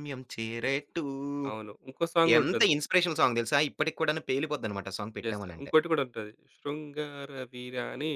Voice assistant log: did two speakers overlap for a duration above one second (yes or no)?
no